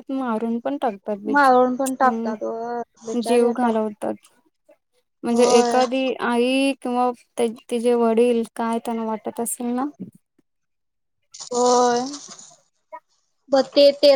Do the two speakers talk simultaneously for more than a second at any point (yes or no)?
yes